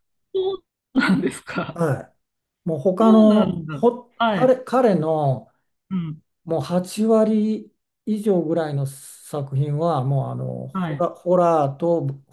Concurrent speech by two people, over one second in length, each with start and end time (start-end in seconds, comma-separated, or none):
3.0-4.6